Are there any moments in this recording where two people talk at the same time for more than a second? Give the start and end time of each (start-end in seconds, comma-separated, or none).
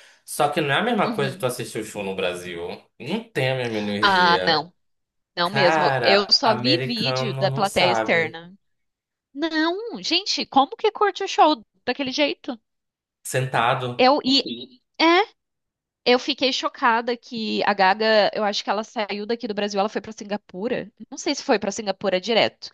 5.4-8.4